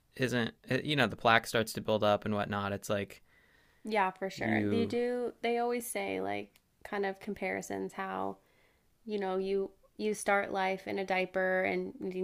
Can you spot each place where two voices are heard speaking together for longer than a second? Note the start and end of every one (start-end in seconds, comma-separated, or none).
none